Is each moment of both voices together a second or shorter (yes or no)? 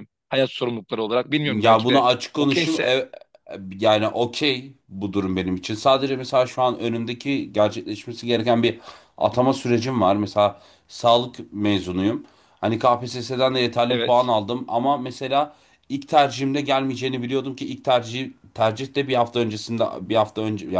no